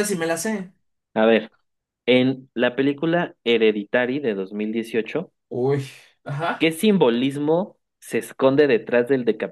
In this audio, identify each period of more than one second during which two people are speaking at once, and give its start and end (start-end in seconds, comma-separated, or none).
none